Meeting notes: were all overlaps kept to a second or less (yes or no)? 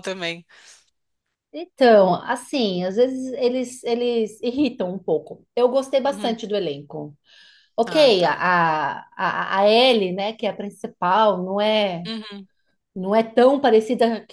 yes